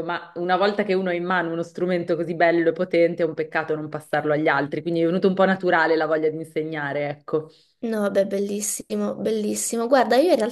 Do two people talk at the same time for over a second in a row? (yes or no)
no